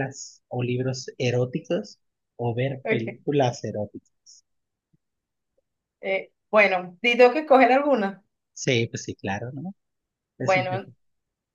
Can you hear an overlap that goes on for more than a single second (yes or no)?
no